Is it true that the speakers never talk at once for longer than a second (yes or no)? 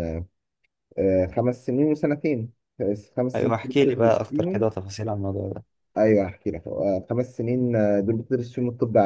no